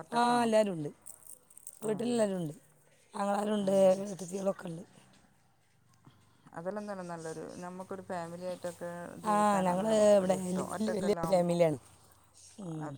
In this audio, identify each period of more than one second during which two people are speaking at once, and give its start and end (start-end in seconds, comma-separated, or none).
9.3-11.5